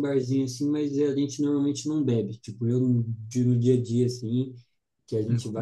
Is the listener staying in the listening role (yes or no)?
yes